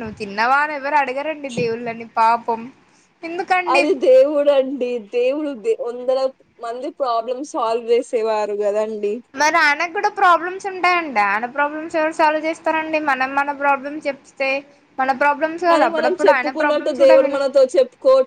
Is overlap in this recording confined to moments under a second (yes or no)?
no